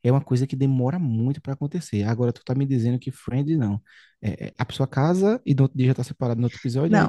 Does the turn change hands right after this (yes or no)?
yes